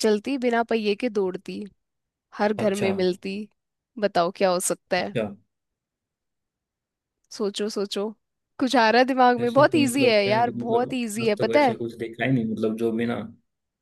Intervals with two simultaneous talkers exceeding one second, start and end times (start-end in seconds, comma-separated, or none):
9.4-11.8